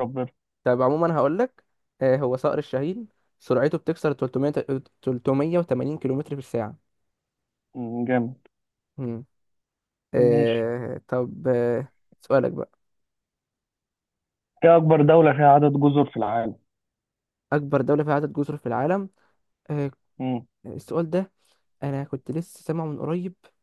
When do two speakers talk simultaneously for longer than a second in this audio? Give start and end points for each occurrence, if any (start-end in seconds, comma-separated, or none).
none